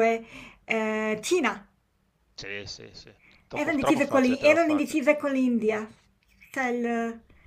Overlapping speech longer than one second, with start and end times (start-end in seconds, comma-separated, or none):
3.5-5.0